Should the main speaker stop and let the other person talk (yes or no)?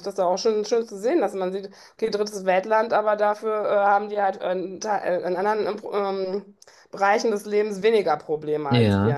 yes